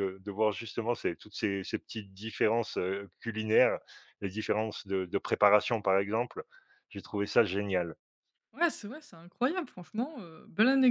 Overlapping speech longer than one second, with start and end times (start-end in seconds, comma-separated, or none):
none